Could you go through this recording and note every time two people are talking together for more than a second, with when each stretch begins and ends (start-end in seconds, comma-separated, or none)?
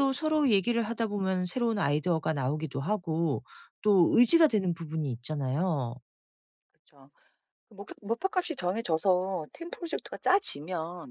none